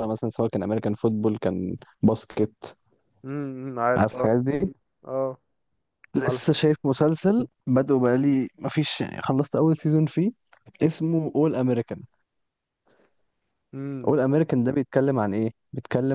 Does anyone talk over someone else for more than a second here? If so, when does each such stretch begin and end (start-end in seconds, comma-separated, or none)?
none